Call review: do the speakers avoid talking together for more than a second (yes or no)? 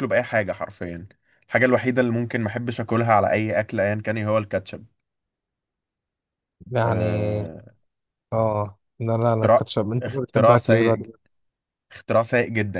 no